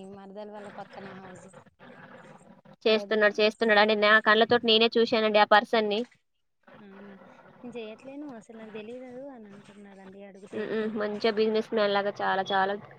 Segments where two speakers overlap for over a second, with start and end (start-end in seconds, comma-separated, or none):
none